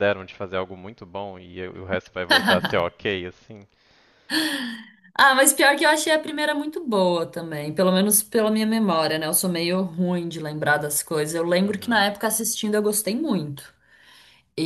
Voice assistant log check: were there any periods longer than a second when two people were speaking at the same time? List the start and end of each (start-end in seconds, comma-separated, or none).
none